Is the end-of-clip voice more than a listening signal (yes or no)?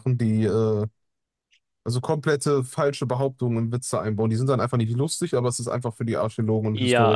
yes